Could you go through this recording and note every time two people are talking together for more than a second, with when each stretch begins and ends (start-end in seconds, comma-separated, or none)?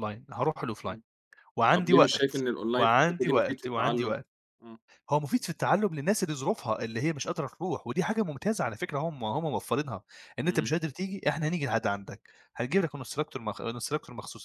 1.7-4.2